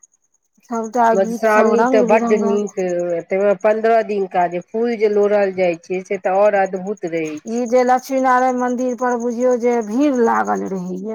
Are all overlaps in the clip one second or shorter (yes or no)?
no